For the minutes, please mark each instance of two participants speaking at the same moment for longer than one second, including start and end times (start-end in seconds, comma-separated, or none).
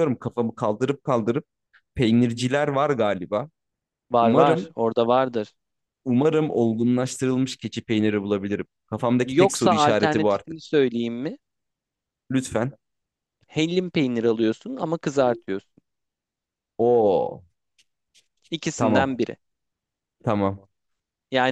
9.3-10.6